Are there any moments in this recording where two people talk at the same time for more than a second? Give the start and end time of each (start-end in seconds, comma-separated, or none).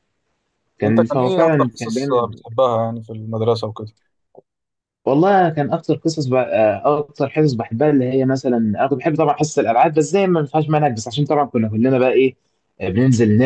0.8-2.4